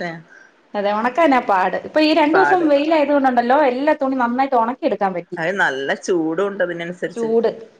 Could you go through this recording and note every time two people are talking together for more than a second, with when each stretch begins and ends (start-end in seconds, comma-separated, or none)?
none